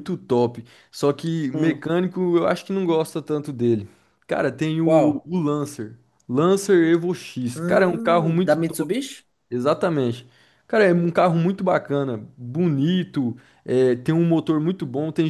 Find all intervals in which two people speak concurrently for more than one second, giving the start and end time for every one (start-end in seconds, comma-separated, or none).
7.5-9.0